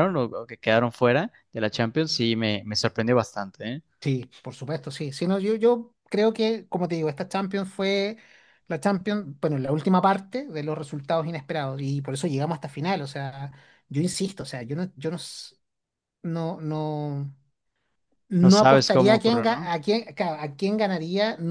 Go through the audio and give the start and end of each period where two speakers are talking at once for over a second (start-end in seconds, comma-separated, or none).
18.4-19.7